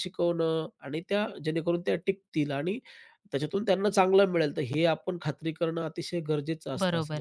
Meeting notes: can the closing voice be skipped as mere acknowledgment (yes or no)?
no